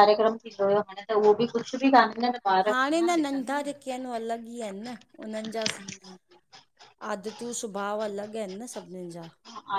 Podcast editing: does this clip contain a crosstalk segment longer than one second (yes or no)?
no